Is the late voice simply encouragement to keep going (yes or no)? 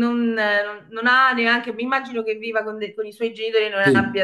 yes